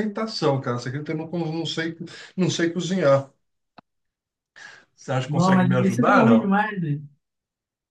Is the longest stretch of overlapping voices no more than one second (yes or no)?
no